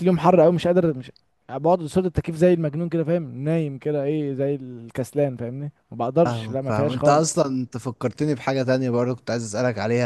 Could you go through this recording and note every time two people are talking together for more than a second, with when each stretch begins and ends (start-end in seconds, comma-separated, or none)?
6.2-7.4